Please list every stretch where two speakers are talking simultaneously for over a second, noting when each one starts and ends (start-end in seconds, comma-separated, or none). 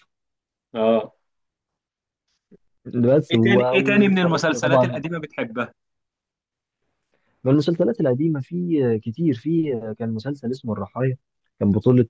3.3-5.0